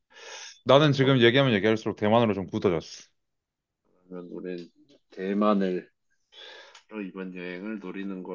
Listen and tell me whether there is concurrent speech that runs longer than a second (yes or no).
no